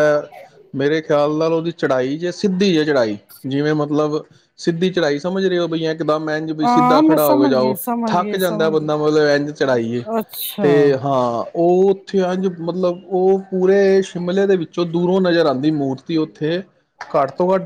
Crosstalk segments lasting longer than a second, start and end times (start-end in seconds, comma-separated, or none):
6.6-8.9